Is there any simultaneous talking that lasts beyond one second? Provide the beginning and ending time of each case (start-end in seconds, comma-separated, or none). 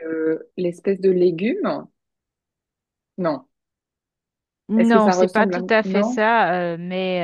4.8-6.2